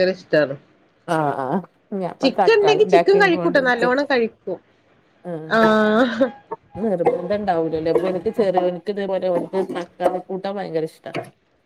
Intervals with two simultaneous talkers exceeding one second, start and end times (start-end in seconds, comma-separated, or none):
2.2-3.9